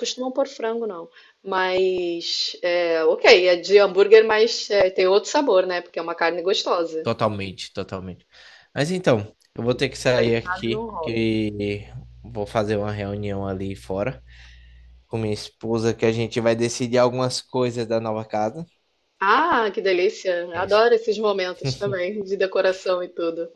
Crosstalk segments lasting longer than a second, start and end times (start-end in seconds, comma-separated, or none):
9.7-11.3